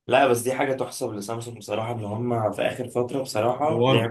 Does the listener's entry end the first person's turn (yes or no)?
no